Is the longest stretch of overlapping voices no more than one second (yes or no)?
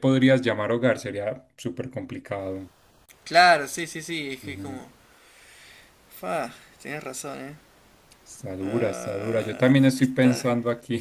no